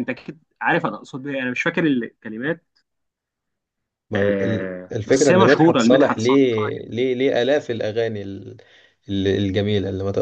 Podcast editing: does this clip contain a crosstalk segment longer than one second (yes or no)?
yes